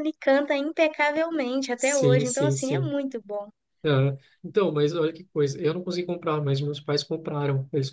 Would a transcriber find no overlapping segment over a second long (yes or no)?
no